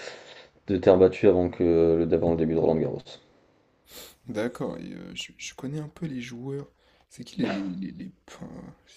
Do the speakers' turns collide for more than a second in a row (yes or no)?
no